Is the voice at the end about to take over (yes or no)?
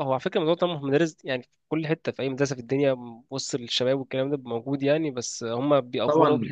yes